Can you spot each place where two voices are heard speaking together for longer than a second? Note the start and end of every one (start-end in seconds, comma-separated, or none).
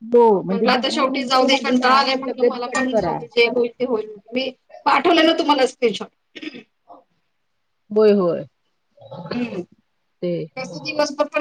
0.5-3.2